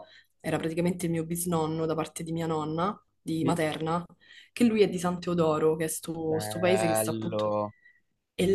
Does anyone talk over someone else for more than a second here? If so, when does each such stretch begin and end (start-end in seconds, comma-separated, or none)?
6.3-7.5